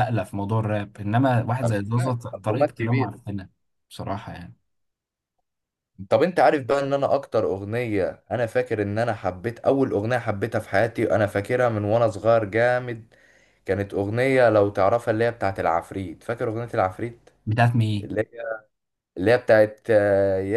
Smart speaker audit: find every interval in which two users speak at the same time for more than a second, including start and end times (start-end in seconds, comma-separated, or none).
1.6-3.2